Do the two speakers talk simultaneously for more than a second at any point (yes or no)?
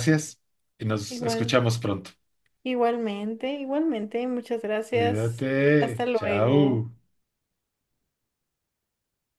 yes